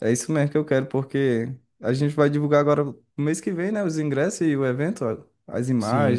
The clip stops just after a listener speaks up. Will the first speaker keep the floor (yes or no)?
no